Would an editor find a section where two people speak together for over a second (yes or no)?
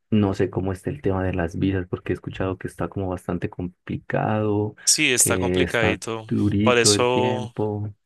yes